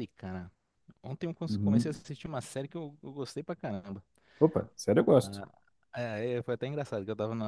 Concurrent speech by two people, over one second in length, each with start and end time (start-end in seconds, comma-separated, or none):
none